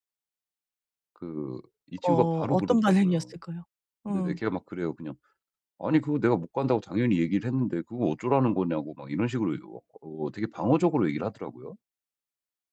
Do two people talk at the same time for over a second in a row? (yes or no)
yes